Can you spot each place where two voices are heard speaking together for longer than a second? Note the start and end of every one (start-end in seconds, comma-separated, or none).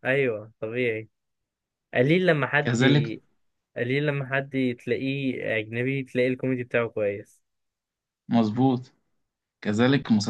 none